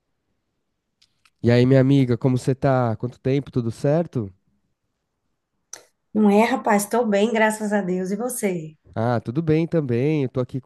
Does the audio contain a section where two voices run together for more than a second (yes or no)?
no